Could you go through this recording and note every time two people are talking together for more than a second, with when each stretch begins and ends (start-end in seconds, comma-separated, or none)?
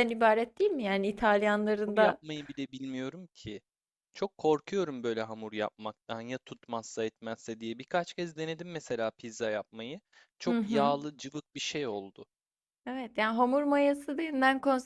none